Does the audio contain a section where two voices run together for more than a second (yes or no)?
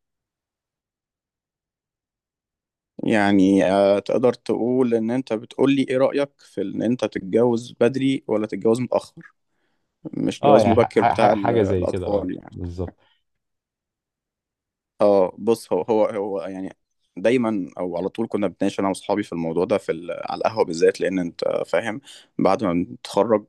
yes